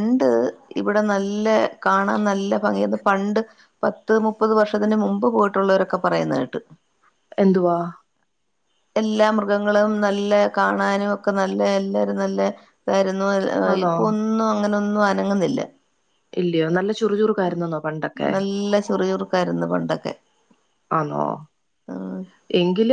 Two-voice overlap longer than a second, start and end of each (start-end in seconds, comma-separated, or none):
none